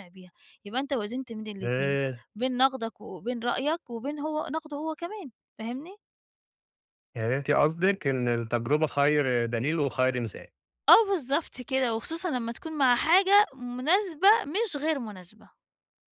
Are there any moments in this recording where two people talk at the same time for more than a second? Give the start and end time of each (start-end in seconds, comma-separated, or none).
none